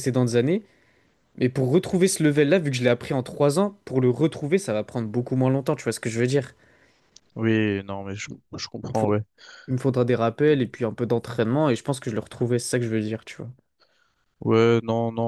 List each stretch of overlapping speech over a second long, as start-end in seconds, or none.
none